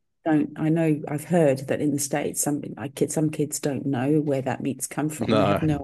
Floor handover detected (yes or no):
no